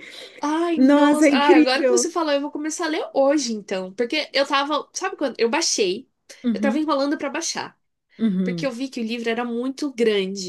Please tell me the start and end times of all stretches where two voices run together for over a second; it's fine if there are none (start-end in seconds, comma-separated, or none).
0.8-2.1